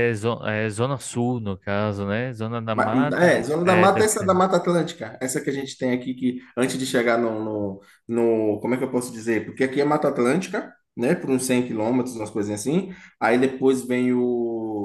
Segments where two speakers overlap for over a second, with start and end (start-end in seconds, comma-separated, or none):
2.7-4.4